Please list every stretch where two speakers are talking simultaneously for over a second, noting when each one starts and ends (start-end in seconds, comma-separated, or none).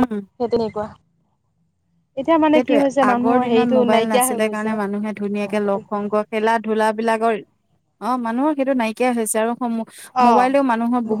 2.5-4.4